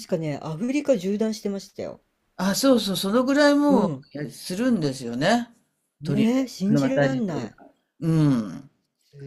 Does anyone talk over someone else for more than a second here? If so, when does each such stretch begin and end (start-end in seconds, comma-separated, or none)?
6.0-7.5